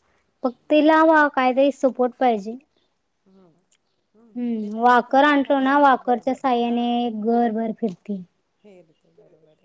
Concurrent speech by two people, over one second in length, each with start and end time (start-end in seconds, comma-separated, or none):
4.4-6.7